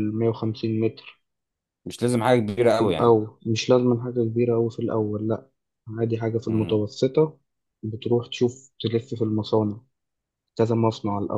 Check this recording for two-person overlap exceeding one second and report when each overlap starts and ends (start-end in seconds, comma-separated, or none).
none